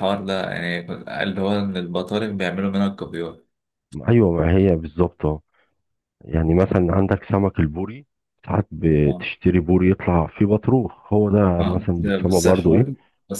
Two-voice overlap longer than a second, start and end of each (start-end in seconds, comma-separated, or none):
11.6-12.9